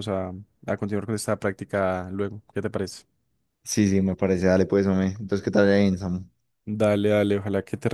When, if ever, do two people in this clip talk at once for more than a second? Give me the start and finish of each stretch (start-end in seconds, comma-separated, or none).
none